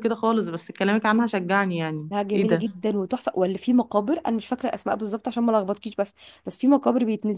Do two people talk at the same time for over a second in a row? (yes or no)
no